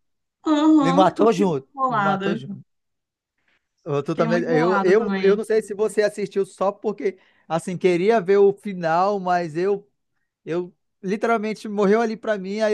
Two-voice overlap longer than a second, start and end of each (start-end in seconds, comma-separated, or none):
0.8-2.4, 4.0-5.4